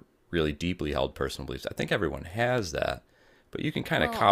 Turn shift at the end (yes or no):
no